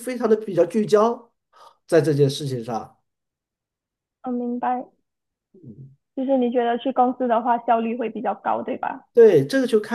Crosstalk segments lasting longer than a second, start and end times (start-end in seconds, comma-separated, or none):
none